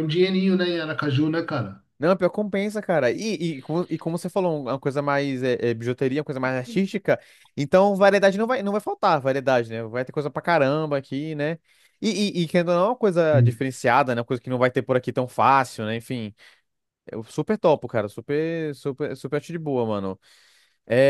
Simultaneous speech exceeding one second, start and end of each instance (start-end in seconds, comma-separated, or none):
none